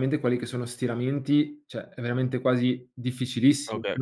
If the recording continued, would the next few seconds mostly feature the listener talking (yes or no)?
yes